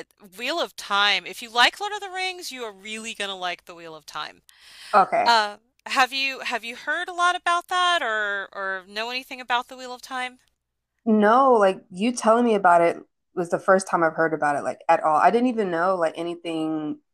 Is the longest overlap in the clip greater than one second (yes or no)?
no